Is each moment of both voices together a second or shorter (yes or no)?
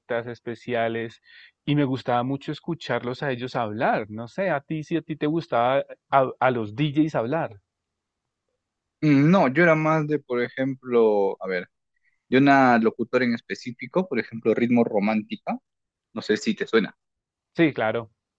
yes